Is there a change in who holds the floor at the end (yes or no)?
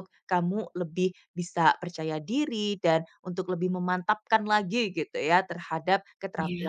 no